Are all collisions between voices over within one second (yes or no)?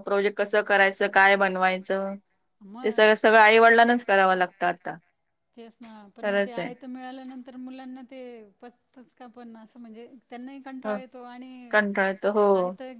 yes